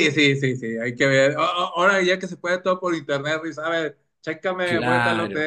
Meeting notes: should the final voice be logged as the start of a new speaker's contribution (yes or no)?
no